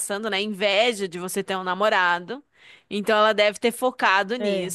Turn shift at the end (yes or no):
no